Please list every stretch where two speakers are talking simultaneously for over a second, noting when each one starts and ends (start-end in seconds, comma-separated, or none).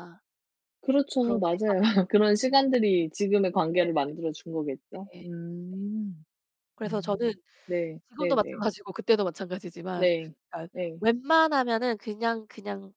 1.2-2.7